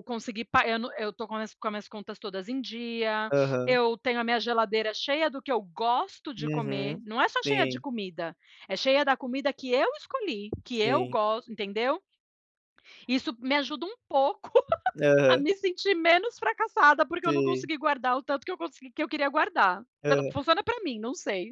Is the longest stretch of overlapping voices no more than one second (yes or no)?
no